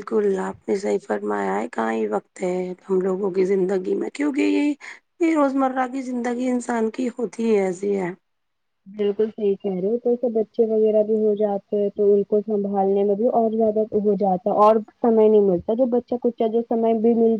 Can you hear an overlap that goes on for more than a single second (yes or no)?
no